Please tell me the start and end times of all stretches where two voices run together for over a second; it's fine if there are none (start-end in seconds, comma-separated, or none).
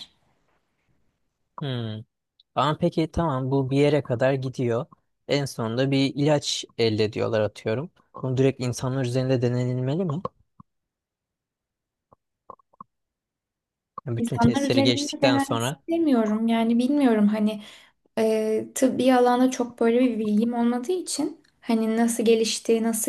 14.2-15.8